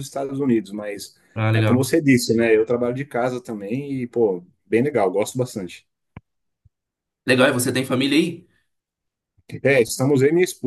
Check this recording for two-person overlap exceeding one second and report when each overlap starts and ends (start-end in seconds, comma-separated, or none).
none